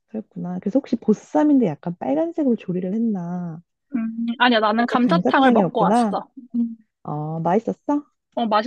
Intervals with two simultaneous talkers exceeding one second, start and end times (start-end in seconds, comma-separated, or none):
4.8-6.2